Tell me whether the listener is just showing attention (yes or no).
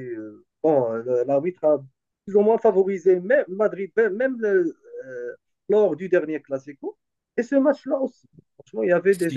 yes